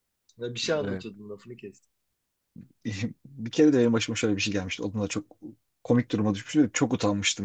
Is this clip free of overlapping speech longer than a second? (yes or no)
yes